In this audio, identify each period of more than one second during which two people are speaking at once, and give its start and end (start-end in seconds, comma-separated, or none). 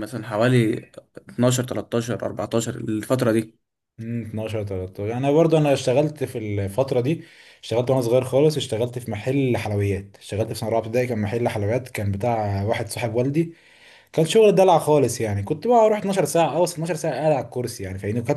none